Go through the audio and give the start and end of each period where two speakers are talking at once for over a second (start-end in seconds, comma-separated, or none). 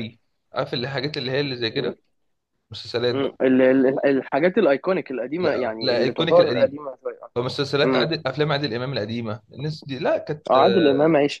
5.4-6.8